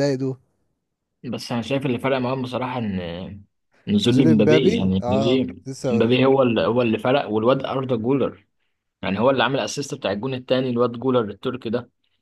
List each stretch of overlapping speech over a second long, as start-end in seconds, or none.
4.1-6.0